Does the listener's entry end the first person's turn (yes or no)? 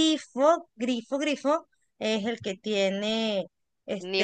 yes